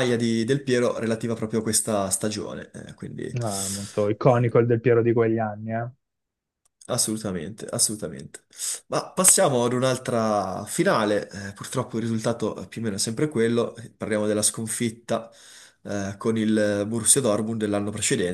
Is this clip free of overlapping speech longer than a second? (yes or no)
yes